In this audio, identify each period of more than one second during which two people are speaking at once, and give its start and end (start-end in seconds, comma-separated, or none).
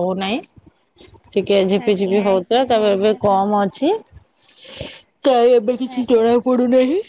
1.9-3.7